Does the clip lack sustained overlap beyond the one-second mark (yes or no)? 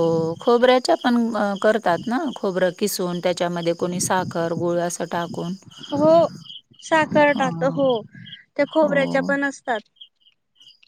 yes